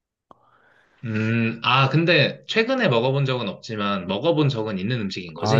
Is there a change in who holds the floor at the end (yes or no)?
yes